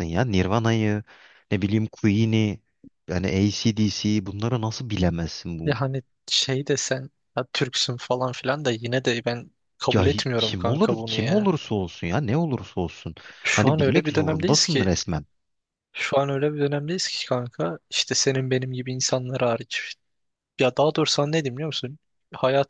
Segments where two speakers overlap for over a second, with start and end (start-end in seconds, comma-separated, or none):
9.9-11.5, 13.5-14.9